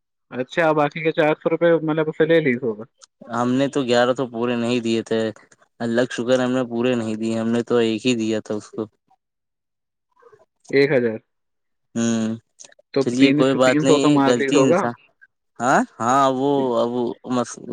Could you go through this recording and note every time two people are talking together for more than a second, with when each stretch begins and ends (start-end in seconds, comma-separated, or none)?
13.0-14.8